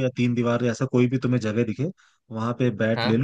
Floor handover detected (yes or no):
no